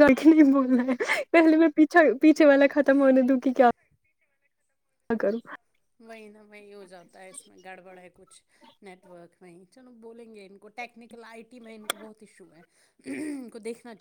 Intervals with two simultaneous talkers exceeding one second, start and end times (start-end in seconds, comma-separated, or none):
none